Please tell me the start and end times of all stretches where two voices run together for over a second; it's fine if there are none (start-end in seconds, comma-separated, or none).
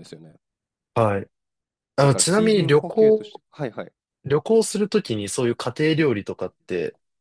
2.0-3.4